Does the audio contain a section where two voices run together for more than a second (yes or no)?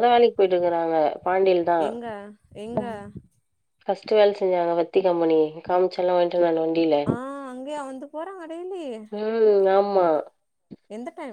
no